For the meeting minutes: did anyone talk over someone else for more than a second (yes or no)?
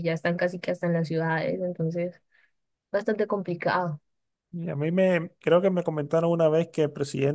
no